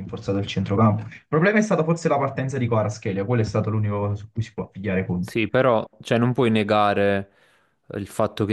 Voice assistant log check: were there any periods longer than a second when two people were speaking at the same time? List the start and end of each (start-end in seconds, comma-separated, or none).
none